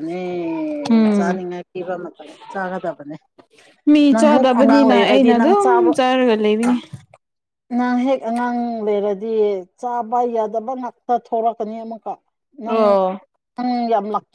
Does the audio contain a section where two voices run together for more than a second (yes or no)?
yes